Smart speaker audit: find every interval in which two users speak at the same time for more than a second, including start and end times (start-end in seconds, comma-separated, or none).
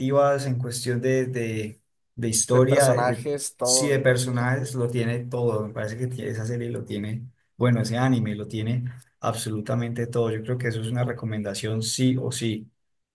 2.5-4.5